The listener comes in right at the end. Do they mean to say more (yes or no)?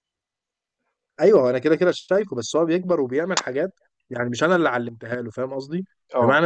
no